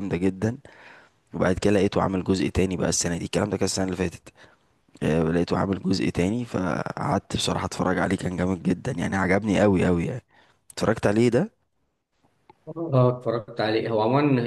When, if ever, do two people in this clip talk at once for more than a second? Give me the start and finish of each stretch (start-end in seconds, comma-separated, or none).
none